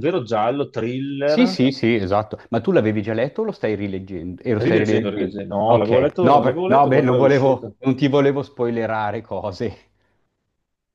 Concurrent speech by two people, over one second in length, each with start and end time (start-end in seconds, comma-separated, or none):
4.6-7.8